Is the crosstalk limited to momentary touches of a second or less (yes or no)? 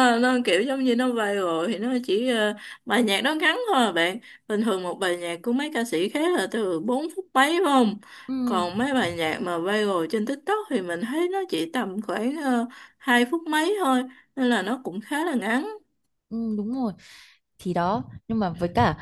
yes